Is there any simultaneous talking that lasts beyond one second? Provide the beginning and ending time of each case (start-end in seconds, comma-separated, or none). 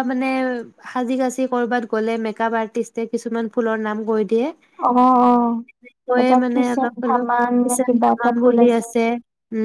6.2-8.7